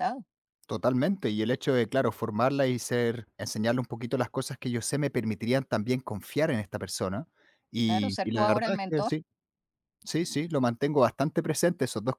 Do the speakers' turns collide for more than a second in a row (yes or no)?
yes